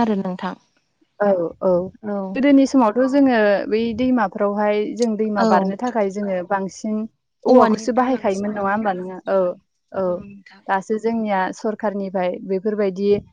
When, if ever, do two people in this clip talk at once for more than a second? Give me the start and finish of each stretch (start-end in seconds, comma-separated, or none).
7.5-9.1